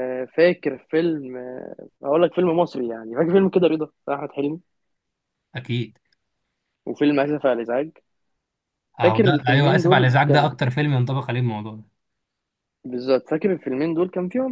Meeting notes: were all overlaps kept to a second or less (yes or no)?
no